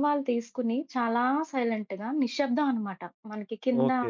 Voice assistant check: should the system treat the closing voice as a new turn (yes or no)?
yes